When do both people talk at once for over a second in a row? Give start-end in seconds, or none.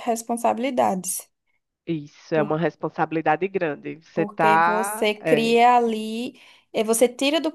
4.1-5.6